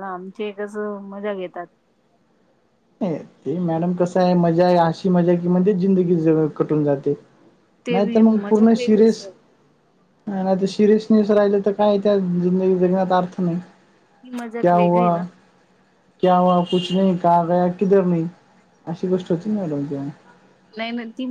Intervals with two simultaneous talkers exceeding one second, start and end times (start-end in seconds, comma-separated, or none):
7.9-9.3